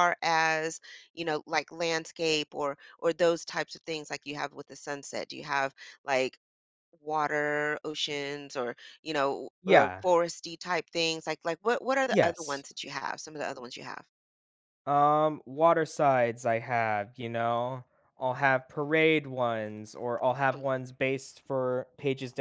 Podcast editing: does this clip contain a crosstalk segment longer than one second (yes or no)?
no